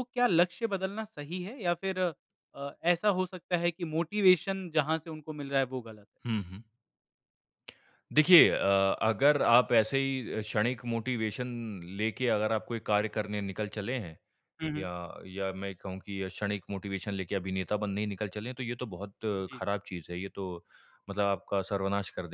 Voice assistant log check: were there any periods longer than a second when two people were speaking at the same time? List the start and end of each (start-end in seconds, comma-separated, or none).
none